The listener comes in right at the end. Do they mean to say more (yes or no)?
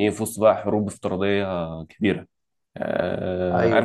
no